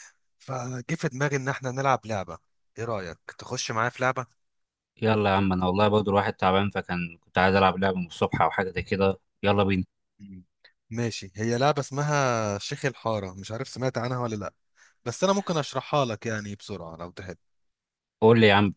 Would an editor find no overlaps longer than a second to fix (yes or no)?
yes